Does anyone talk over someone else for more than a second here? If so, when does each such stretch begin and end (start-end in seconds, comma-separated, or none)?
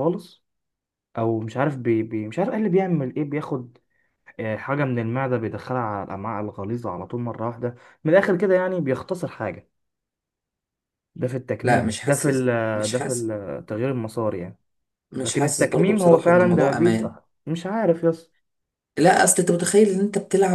11.6-13.3, 15.2-17.1